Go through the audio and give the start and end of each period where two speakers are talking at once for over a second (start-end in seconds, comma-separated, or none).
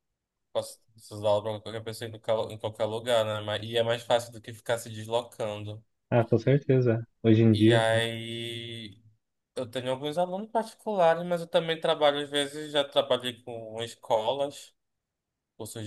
none